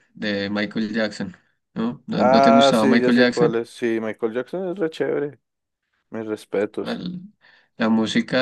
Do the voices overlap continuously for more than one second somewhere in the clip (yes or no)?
yes